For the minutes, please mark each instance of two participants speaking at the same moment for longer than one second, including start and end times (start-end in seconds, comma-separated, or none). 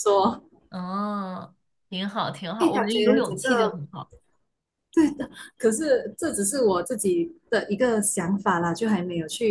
2.6-3.8